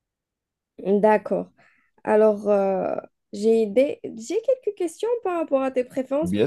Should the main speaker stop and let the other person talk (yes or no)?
no